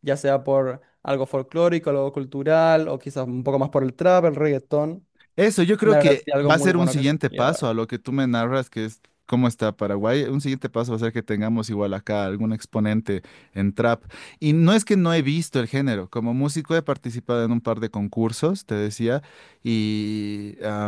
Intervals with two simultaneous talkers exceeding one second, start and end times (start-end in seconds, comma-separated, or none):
5.8-7.7